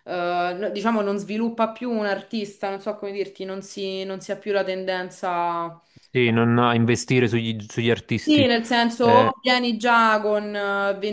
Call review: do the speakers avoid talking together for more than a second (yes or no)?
yes